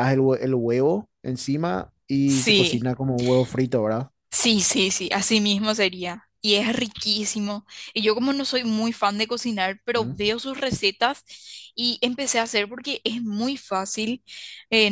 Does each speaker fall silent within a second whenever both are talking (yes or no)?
yes